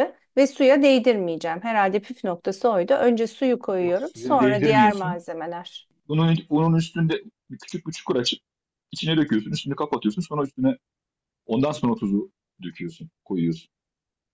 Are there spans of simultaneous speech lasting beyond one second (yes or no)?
yes